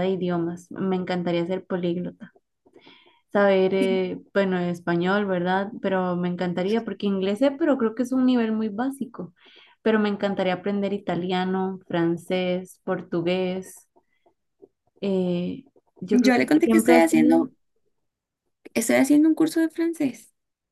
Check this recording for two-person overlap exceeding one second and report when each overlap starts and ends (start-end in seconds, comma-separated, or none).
16.1-17.4